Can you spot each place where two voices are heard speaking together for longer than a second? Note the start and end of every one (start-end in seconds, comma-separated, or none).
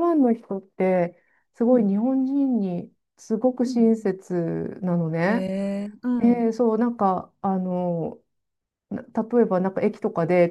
none